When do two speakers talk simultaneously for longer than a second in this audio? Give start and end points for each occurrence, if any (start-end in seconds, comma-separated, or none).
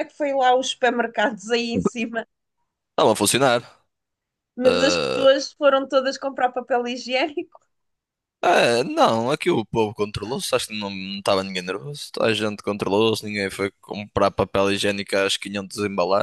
none